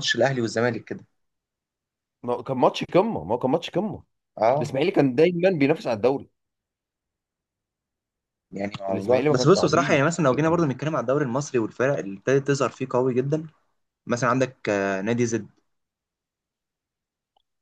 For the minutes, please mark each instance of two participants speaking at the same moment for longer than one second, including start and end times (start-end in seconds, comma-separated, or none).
8.9-10.7